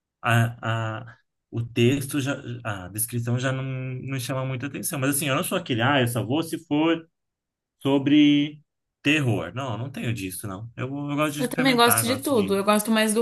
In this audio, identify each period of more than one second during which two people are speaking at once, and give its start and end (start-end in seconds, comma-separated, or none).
11.4-12.6